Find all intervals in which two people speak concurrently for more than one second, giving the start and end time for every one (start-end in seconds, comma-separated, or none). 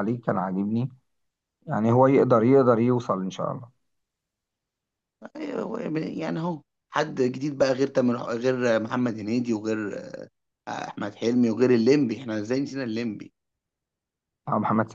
none